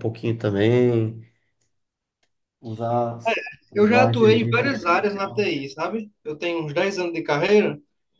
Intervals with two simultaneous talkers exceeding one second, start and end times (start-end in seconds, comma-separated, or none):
3.7-5.5